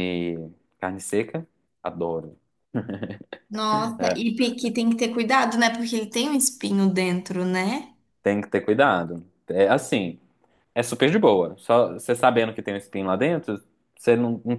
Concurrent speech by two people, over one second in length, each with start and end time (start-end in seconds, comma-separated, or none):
none